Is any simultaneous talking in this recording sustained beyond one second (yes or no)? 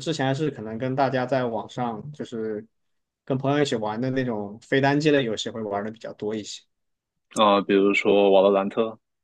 no